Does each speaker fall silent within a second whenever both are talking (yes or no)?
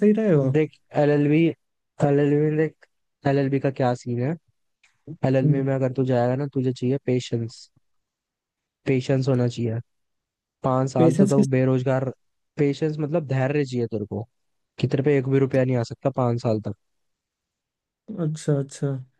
yes